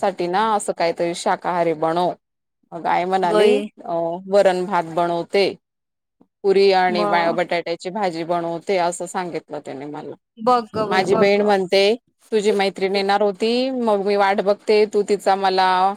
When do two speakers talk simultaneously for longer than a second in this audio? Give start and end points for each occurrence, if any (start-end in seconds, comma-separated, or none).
none